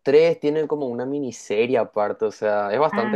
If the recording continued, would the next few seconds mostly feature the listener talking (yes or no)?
no